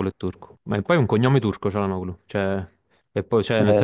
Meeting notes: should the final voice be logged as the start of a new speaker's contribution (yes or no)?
no